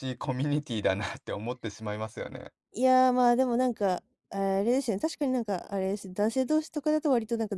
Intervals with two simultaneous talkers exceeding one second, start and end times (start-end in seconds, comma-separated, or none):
none